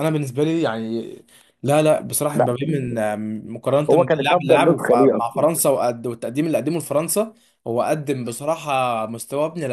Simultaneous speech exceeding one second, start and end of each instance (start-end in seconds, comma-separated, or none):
3.9-5.5